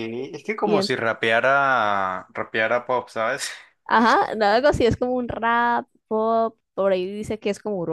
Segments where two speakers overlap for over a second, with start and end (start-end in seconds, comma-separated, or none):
none